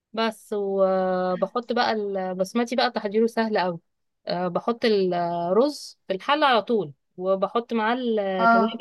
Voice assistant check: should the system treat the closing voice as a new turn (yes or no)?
no